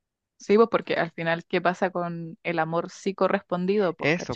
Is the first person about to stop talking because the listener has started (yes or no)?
yes